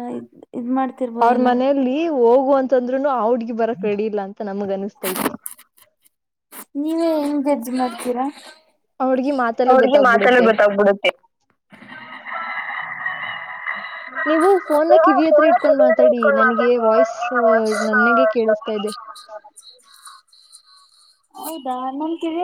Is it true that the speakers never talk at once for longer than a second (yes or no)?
no